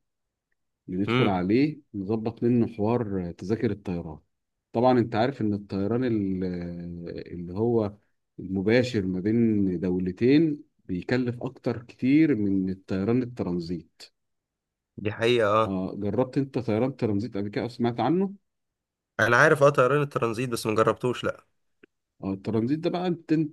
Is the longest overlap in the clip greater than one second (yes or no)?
no